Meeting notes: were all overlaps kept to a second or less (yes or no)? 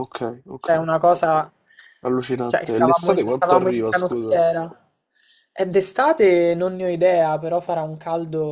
no